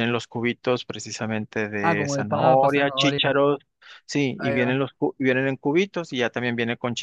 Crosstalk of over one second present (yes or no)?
yes